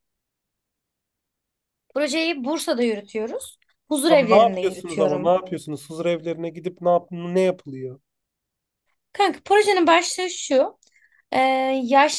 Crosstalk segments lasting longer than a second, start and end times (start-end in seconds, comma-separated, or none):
4.0-5.4